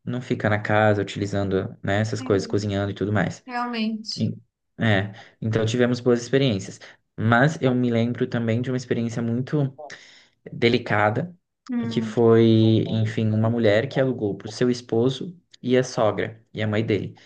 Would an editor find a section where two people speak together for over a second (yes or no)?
no